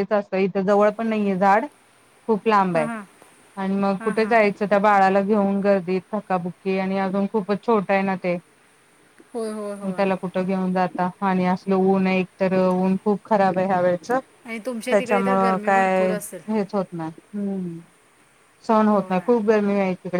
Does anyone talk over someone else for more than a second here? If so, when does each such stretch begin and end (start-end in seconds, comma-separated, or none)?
14.4-16.1